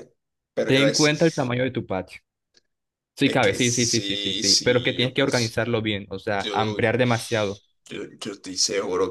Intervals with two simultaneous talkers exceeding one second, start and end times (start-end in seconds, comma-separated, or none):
3.2-5.6, 6.4-7.6